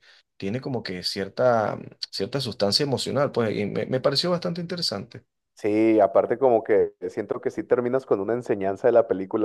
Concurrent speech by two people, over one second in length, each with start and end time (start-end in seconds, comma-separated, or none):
none